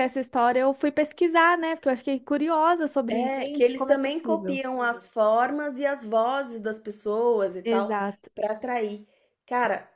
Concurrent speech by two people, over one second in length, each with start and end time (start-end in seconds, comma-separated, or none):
3.1-4.6